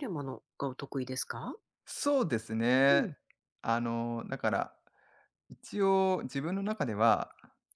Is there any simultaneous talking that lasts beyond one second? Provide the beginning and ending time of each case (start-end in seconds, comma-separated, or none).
none